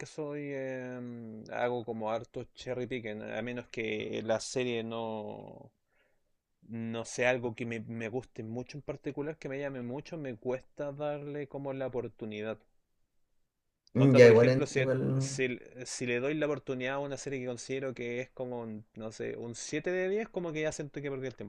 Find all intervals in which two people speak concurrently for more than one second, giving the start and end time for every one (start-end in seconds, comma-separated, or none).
13.9-15.4